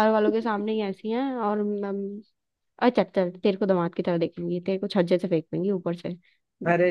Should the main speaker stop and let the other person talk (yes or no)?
yes